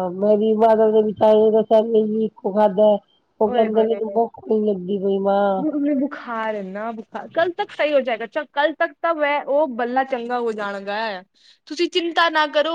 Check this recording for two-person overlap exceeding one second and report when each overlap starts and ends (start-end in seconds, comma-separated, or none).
none